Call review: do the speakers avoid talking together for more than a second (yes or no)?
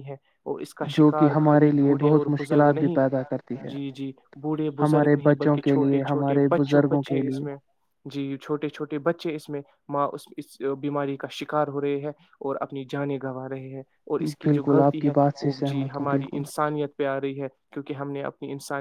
no